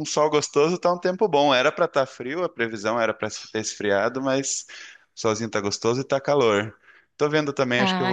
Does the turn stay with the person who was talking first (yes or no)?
yes